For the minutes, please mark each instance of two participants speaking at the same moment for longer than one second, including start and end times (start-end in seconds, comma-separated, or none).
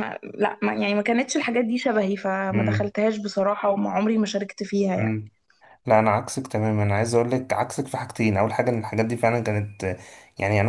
none